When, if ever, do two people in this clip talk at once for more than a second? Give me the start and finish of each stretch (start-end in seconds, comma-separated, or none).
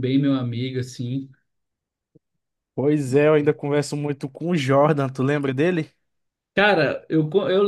none